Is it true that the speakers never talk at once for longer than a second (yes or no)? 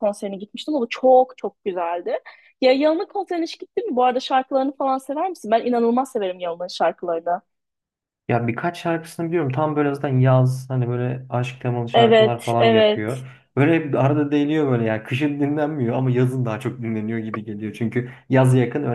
no